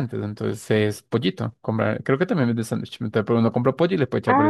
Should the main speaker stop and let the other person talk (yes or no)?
yes